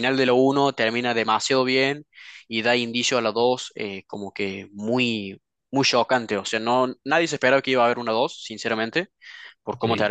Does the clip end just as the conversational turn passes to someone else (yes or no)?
no